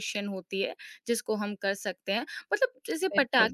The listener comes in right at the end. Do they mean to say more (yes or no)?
no